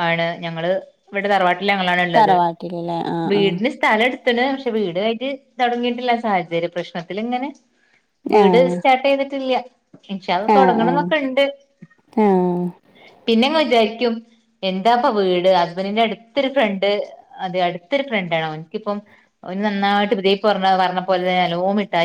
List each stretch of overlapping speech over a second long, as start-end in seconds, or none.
none